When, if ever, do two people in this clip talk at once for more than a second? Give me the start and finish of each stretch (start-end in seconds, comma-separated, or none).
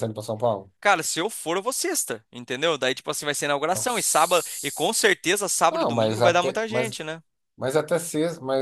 3.7-5.0, 5.7-7.0